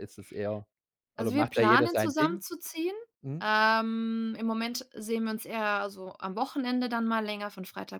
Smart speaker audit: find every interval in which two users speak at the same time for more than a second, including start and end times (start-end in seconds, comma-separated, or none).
1.2-2.4